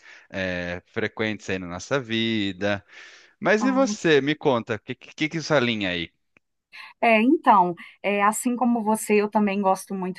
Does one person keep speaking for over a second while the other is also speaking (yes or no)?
no